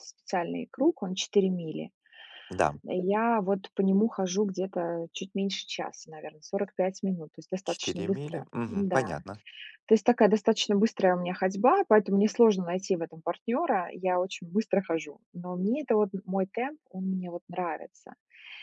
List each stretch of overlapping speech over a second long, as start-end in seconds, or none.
7.6-9.1